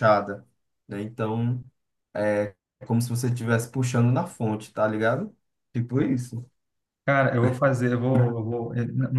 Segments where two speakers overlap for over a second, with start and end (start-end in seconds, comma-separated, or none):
none